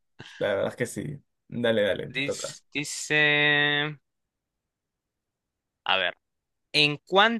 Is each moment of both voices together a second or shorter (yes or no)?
yes